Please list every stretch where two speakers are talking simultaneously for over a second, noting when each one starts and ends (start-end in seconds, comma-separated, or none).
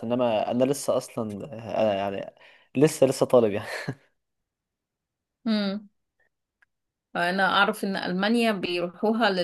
none